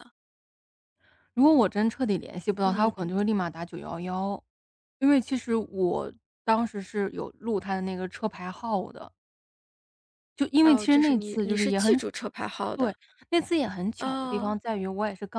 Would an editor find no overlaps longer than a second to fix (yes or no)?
no